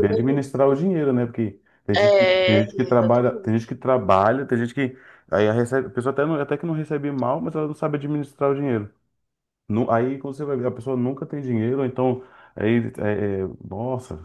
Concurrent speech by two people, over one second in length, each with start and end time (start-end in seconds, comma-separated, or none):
1.9-3.5